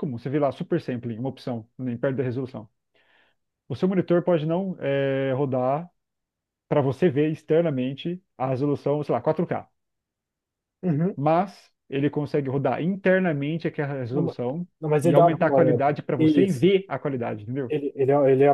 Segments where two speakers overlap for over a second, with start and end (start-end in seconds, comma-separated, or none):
15.0-16.7